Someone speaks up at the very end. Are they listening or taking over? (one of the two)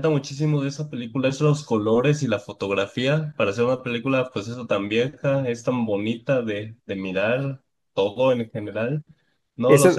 listening